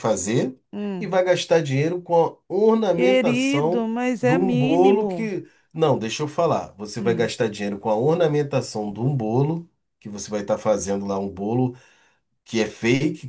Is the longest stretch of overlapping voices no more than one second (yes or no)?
no